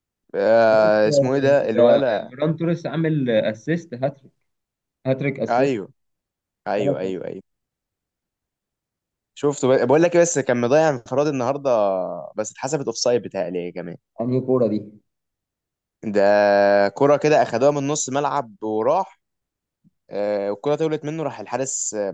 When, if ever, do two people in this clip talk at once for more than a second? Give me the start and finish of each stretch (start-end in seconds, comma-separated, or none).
0.8-2.3